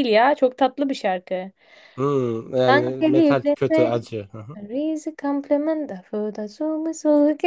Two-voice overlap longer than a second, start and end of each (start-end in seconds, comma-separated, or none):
2.7-4.0